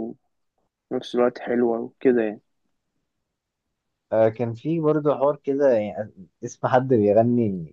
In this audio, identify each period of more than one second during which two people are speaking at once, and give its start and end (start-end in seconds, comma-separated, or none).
none